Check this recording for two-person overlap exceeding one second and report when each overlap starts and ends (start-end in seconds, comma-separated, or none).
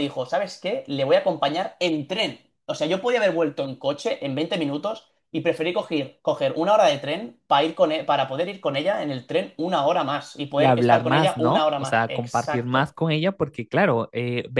10.5-12.9